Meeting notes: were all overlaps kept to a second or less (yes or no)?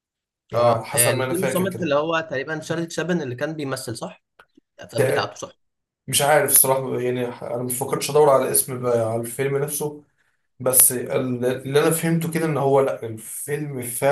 no